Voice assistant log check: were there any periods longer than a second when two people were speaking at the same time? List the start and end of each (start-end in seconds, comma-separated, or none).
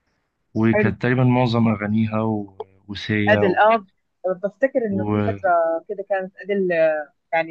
none